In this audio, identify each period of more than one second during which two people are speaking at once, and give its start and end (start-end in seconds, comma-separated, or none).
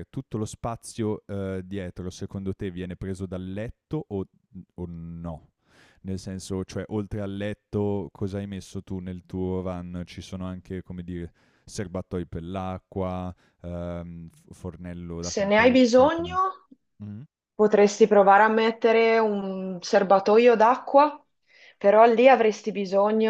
15.2-16.4